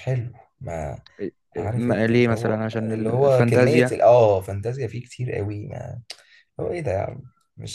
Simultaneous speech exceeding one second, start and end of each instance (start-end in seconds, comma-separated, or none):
1.7-4.0